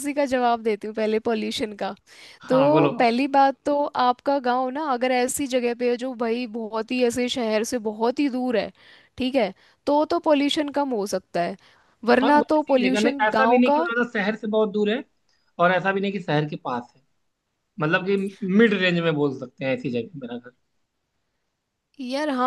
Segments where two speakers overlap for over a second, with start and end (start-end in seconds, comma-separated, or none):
12.2-13.8